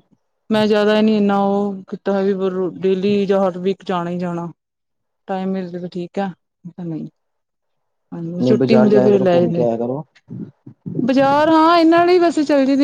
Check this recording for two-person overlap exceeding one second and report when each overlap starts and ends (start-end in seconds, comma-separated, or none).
8.4-9.7